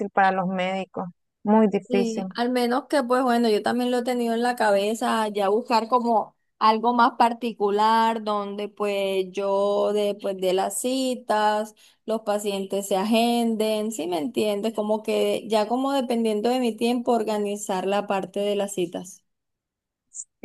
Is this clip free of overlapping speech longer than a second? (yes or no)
yes